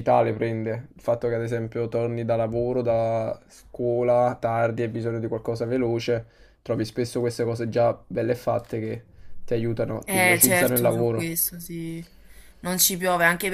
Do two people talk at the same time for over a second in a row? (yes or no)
yes